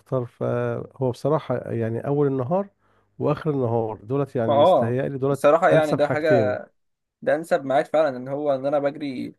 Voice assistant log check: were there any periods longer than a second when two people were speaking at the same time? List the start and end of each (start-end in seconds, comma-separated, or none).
4.5-6.5